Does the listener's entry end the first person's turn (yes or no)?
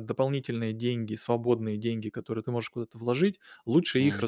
no